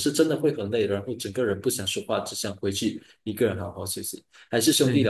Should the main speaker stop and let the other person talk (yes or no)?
no